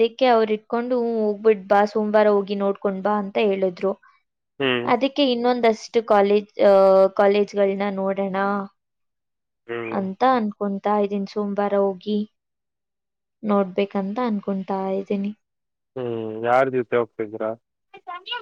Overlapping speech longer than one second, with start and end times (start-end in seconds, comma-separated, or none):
none